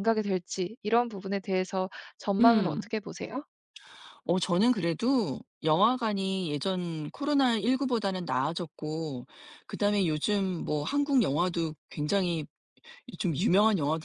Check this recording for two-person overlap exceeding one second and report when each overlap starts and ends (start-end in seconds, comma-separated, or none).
none